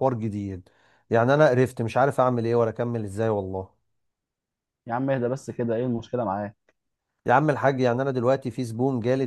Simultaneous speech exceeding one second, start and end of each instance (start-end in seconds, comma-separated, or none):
none